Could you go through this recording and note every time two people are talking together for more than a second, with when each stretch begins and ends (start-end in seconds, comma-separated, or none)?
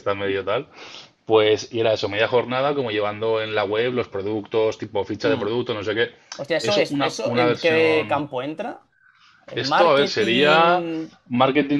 6.6-8.2, 9.6-10.8